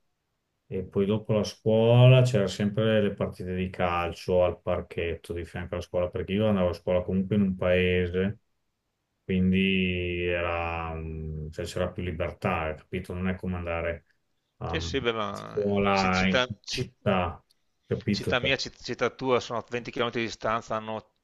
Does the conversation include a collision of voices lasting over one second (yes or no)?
yes